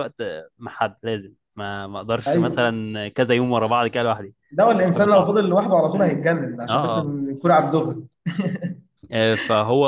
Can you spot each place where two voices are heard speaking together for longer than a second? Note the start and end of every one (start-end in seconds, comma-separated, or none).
none